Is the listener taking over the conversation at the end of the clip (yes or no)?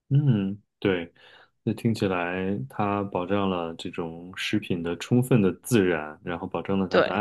no